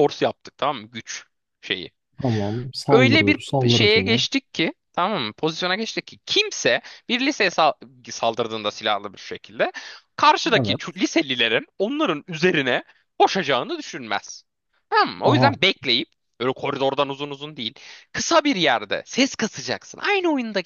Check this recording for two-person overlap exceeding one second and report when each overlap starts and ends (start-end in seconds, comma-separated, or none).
2.9-4.2